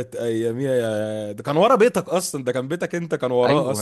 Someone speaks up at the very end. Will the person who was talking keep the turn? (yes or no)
no